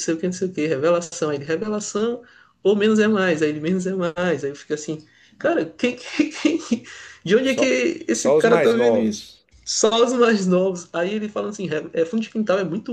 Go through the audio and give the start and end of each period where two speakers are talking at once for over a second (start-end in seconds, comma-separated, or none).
7.5-9.3